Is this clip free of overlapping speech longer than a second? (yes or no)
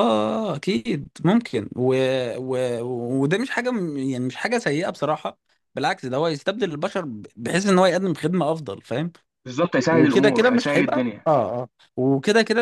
no